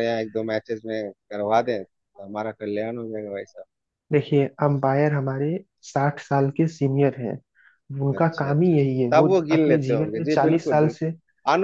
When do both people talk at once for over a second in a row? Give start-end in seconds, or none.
8.1-11.0